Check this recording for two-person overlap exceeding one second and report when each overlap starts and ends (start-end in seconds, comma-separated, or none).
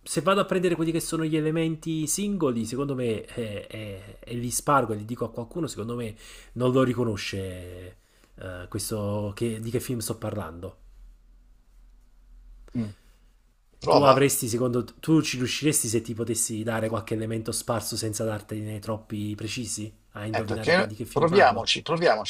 20.3-21.7